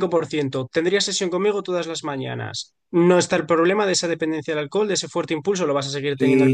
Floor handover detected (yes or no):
yes